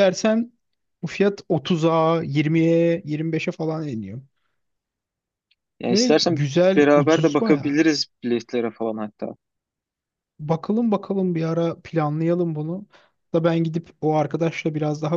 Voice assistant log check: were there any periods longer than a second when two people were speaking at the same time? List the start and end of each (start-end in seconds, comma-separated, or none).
5.9-7.8